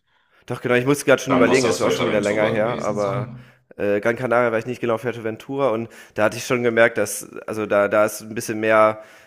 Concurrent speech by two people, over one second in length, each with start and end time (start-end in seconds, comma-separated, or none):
1.3-3.3